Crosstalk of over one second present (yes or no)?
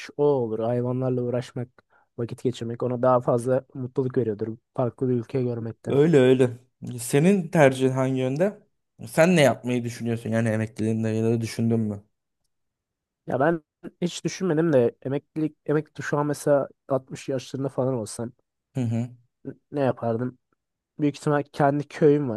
no